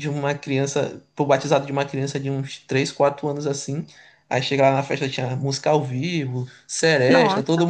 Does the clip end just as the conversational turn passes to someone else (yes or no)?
no